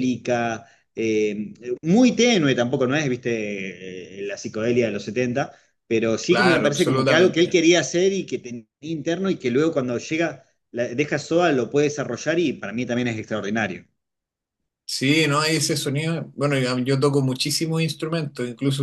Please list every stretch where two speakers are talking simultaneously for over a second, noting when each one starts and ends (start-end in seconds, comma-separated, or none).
6.3-7.5